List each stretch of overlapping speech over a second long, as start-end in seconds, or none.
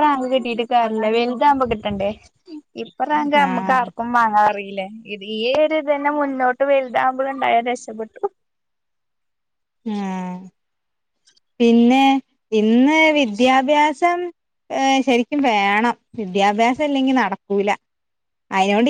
none